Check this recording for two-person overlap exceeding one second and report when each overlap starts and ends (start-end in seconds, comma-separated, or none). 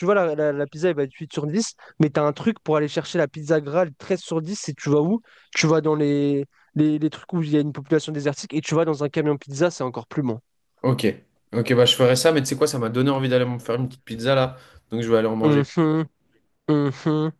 none